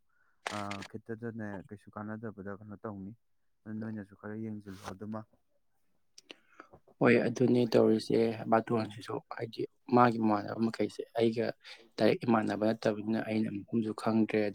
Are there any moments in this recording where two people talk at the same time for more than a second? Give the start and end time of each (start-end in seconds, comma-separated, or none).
none